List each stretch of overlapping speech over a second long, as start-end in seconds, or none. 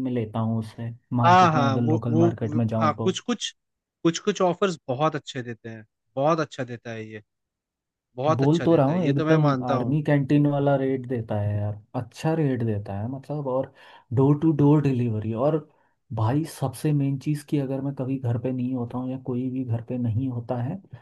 1.2-3.1, 8.4-9.9